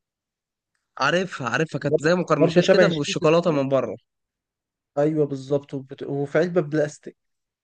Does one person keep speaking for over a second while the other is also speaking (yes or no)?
yes